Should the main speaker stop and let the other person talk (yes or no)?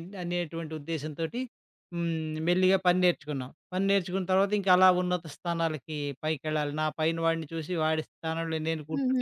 yes